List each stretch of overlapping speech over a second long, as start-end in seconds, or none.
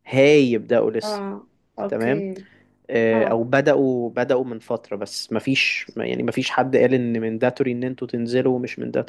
none